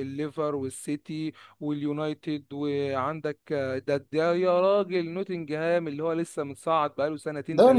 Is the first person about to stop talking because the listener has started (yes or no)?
yes